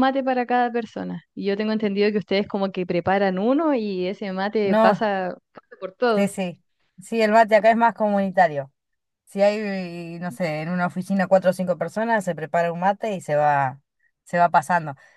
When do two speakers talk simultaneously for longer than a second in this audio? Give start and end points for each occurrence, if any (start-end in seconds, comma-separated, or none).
none